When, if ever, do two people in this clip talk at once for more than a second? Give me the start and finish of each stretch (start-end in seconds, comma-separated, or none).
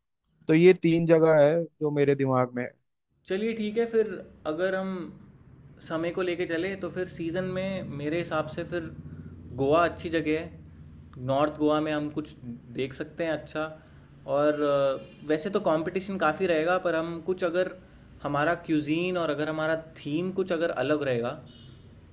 none